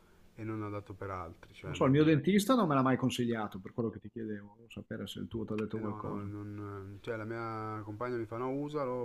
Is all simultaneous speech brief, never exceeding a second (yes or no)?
yes